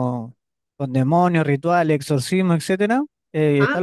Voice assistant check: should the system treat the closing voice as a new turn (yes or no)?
no